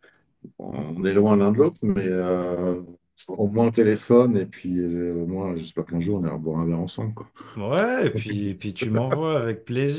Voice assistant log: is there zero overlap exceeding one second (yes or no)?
yes